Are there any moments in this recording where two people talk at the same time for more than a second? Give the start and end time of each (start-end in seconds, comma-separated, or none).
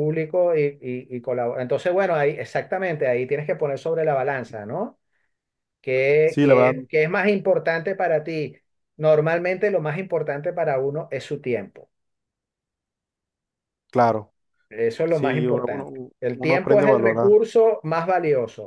15.1-17.4